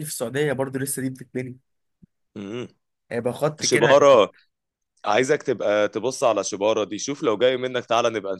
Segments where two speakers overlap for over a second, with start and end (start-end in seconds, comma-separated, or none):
none